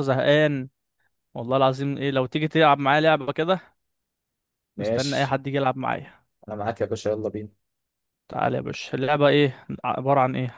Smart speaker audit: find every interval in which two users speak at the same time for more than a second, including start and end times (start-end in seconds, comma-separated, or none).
none